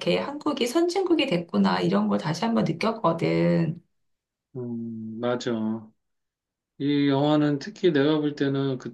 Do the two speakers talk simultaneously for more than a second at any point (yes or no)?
no